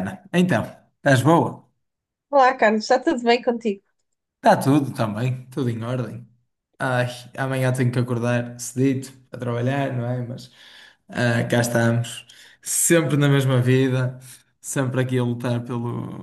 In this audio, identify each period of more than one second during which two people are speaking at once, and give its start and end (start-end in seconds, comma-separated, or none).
none